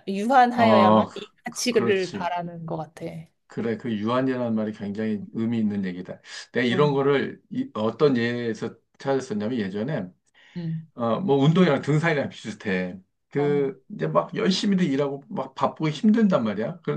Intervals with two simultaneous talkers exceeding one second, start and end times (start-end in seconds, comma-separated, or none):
0.5-2.3